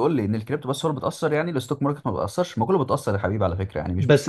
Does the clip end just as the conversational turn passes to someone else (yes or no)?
yes